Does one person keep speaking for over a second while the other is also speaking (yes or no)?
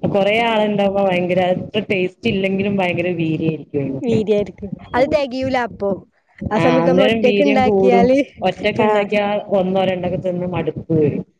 yes